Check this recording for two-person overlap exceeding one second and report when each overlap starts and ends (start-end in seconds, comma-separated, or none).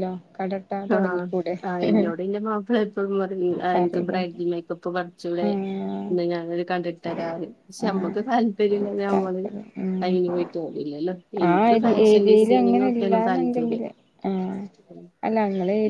11.8-13.8